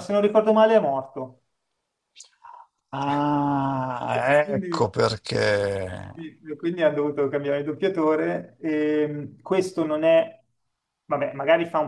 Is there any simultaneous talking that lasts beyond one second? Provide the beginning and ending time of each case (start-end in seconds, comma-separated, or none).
none